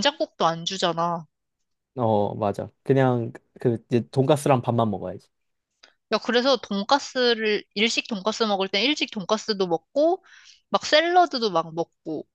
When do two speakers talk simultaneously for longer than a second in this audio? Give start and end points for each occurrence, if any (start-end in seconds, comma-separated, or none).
none